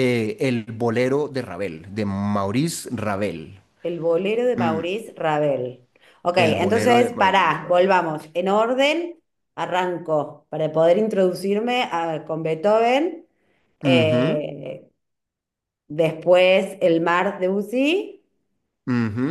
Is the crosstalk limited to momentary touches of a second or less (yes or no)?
no